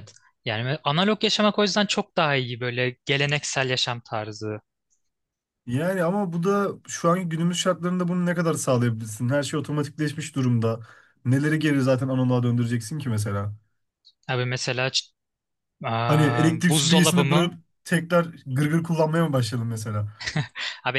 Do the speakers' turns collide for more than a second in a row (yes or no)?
yes